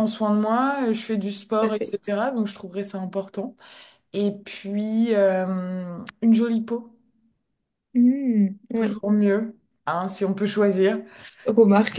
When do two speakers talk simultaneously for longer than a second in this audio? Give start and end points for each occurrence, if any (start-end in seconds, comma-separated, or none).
none